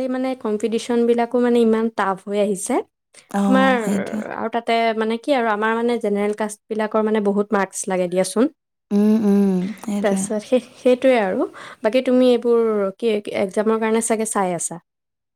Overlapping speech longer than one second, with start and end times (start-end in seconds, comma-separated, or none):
none